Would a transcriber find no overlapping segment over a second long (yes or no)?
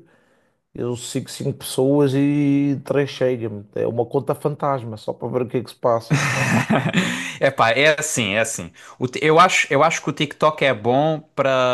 yes